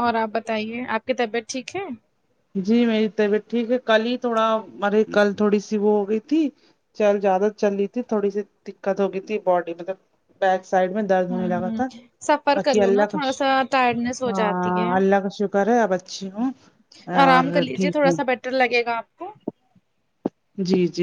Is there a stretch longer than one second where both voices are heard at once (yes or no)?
yes